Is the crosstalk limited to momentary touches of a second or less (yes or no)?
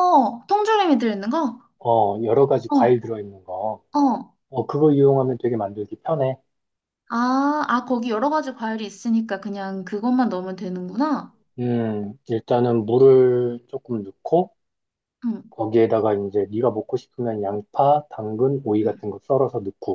yes